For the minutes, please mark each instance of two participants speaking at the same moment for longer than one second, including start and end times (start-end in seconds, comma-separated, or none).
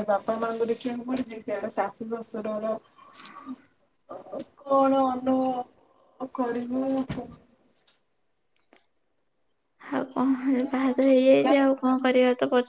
10.5-12.2